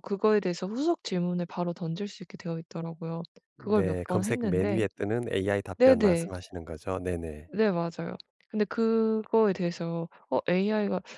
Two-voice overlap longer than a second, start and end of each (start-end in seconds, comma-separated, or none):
3.6-4.8